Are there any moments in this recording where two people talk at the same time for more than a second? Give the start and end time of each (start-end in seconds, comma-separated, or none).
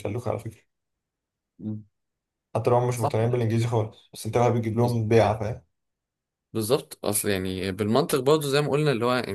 none